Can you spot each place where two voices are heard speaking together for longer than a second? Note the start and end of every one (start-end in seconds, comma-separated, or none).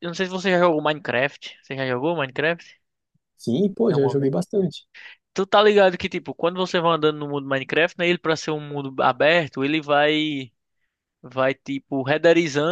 none